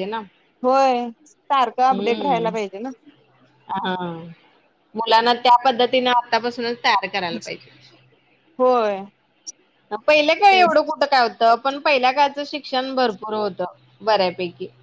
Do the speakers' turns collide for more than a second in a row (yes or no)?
no